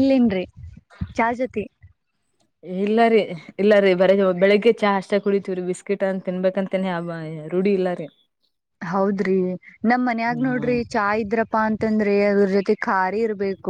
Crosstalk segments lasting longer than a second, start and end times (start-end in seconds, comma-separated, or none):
none